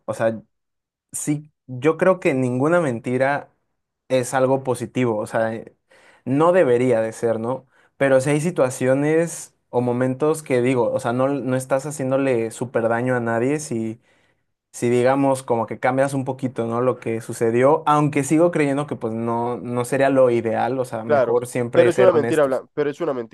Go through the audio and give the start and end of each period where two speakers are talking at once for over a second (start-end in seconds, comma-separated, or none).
21.1-22.6